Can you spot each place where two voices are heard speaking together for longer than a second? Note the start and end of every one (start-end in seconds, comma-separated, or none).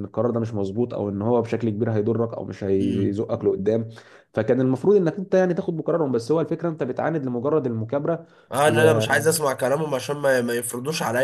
none